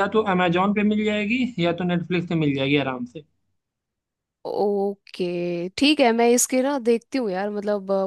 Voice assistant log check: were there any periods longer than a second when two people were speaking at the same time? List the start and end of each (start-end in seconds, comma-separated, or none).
none